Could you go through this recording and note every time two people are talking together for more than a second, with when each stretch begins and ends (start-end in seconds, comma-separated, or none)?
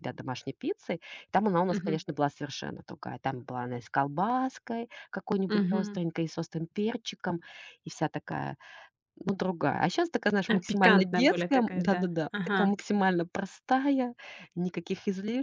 10.5-12.7